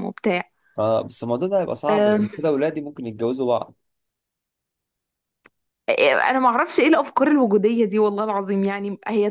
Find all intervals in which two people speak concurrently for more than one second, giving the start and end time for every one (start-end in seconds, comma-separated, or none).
none